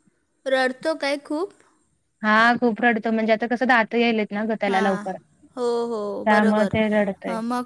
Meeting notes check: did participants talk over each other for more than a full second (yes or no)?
no